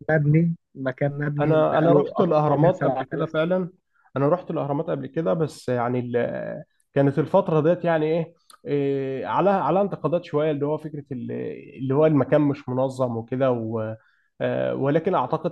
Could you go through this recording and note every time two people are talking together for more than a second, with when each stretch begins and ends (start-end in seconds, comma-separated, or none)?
1.4-3.5